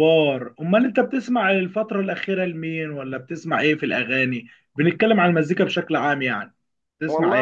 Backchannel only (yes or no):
no